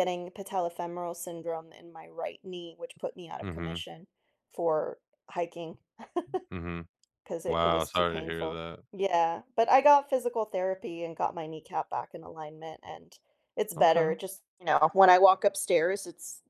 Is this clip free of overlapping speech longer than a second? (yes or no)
no